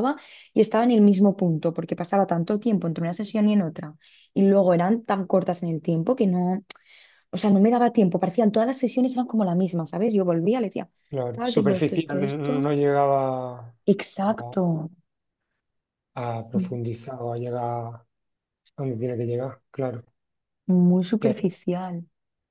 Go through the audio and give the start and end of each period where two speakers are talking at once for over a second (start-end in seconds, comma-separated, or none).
11.3-12.7